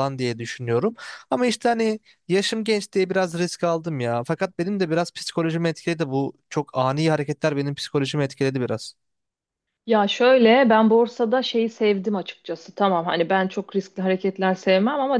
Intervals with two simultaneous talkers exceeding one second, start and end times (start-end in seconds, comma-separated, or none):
none